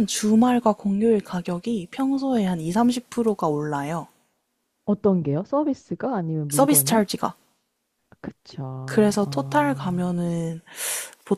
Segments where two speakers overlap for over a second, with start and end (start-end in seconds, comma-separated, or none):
8.8-10.1